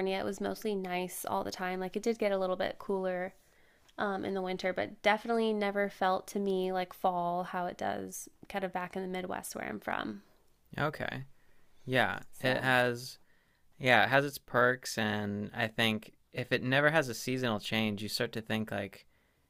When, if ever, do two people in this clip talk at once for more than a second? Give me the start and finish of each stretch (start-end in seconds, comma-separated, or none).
none